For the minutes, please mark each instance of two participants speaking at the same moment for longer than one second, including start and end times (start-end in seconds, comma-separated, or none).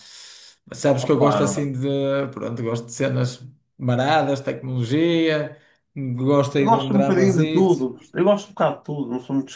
6.5-7.9